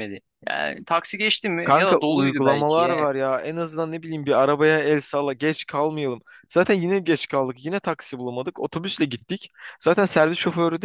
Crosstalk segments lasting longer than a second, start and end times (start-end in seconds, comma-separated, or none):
1.6-3.0